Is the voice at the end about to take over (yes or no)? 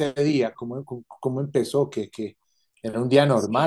yes